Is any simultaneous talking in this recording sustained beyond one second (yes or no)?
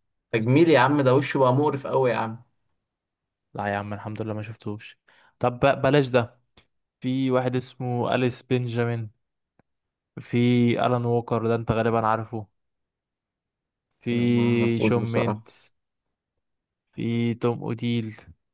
yes